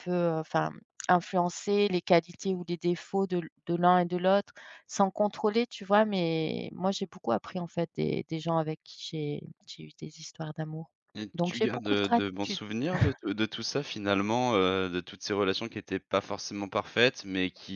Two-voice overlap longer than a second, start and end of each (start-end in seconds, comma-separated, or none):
11.3-12.6